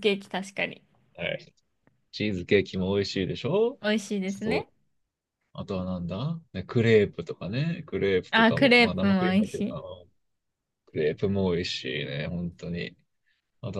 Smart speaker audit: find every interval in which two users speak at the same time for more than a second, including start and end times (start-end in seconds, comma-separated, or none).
8.3-9.8